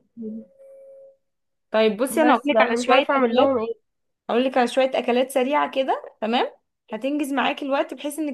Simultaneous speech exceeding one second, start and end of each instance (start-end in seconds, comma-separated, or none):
2.2-3.5